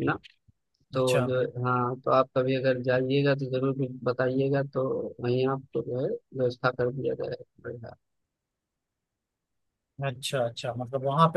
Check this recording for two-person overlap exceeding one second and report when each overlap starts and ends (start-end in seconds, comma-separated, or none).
none